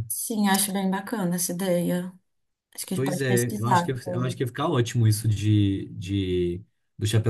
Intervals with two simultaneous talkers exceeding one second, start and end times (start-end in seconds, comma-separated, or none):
2.9-4.4